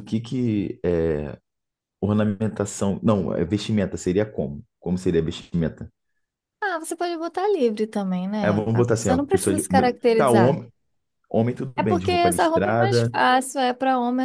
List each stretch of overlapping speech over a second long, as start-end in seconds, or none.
8.4-10.6, 11.8-13.1